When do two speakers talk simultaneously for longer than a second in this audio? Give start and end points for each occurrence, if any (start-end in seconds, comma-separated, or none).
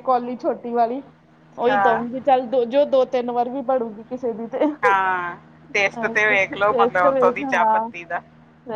6.3-7.9